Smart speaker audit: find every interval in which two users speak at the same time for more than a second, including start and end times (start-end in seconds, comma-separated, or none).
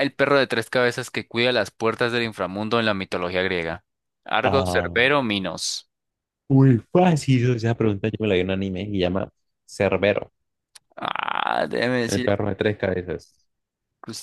none